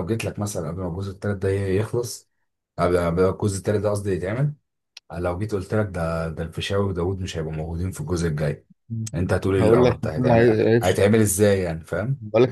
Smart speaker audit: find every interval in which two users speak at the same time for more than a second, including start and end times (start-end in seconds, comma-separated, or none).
9.6-11.0